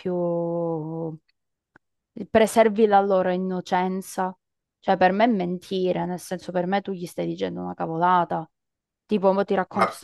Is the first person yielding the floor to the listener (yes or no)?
no